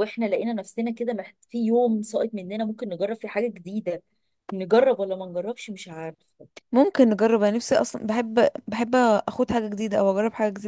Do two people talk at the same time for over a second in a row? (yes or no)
no